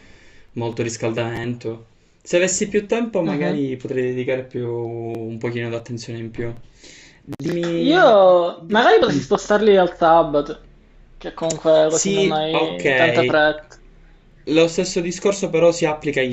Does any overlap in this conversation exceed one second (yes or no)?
yes